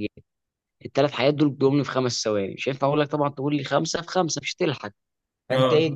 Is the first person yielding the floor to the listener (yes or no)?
no